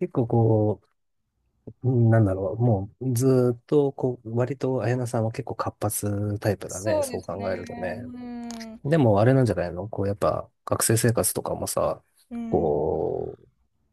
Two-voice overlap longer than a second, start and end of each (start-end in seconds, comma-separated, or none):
6.7-8.0